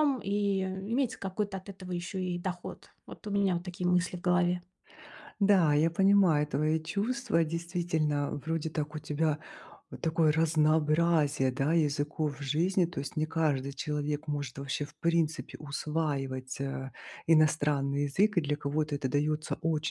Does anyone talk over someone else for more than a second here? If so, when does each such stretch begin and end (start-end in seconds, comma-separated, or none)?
none